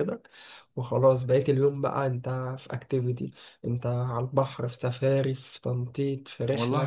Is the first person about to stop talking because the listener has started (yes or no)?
yes